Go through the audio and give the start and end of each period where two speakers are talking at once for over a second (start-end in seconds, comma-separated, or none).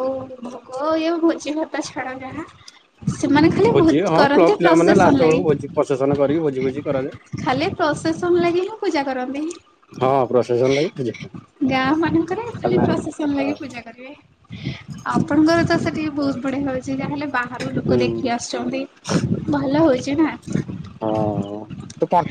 3.2-5.4